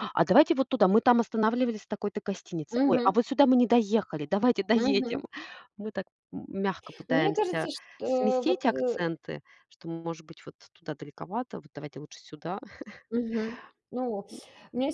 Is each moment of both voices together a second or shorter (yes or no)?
no